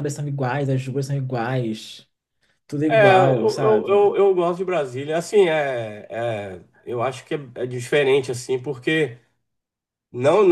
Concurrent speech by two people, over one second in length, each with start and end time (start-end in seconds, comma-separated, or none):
2.9-4.1